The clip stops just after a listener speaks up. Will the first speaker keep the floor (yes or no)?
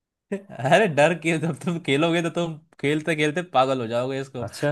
yes